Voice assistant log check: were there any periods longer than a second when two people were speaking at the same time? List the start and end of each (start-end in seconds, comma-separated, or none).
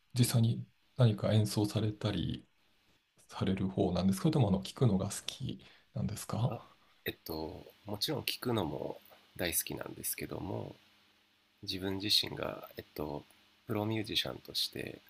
none